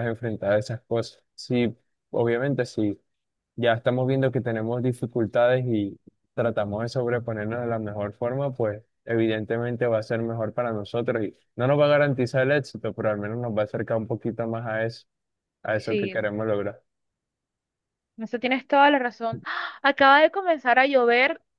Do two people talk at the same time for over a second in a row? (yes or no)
no